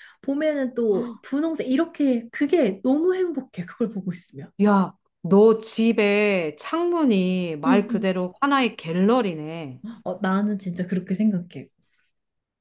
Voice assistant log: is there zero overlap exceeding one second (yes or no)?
yes